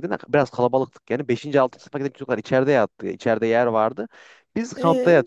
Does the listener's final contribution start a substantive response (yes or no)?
no